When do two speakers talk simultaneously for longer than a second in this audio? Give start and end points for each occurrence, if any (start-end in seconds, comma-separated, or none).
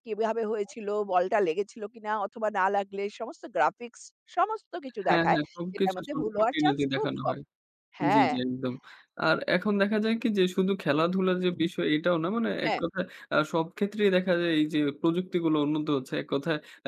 5.0-7.3